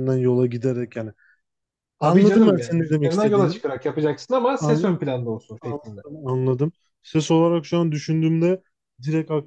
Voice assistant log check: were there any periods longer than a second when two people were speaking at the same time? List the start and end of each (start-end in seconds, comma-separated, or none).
2.0-3.6